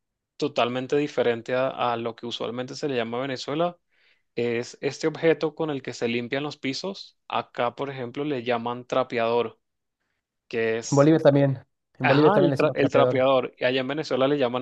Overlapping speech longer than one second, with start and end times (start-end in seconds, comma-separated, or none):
12.0-13.3